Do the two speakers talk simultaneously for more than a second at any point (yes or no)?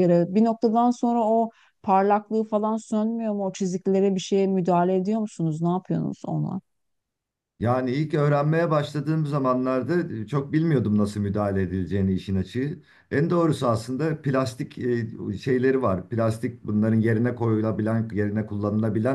no